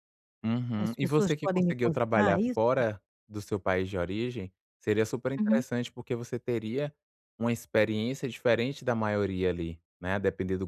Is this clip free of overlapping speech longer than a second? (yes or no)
no